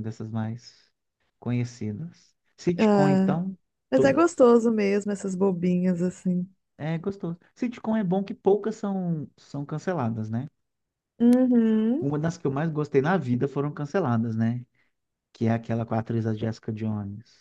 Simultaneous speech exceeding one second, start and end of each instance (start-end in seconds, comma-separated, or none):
none